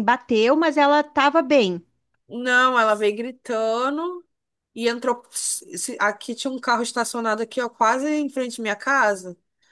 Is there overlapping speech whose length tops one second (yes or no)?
no